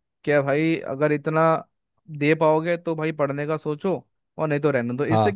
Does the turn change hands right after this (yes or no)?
no